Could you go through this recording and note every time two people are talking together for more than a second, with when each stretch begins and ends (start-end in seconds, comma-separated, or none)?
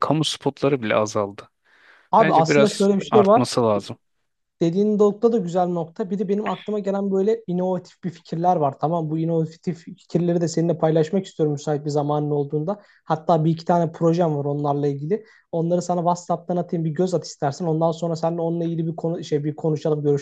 2.2-3.5